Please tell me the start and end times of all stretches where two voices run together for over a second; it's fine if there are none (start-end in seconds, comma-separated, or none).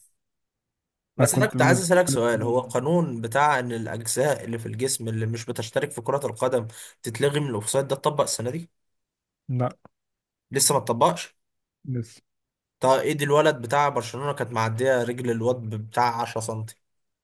1.2-2.7